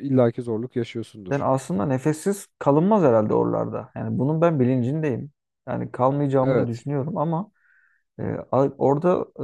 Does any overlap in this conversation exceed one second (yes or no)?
no